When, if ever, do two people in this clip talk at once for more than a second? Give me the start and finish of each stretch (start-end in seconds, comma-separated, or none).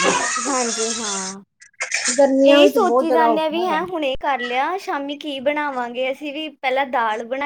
2.5-3.8